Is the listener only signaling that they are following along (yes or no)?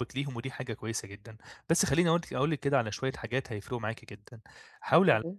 yes